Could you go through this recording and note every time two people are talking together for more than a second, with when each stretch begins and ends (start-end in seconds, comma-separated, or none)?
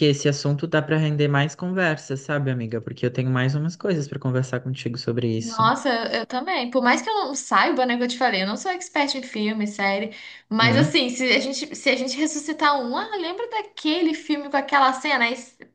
none